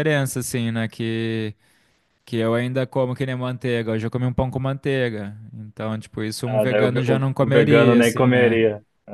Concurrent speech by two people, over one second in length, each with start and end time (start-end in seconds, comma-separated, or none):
6.5-8.6